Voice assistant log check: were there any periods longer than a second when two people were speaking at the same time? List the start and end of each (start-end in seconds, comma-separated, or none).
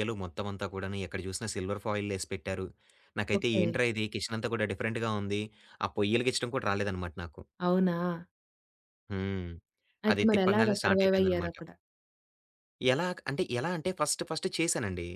10.1-11.6